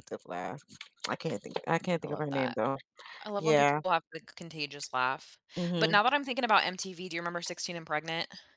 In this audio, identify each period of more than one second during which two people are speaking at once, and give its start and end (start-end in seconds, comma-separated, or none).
none